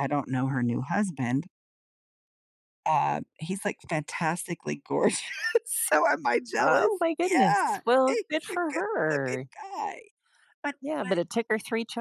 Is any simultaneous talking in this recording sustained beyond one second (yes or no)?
yes